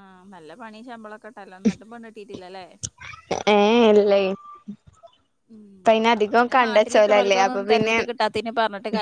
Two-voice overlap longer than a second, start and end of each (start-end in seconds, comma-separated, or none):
6.4-8.0